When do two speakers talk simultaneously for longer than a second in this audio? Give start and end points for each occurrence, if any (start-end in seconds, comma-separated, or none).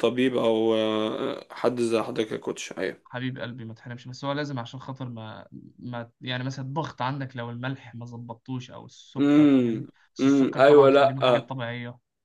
9.2-11.5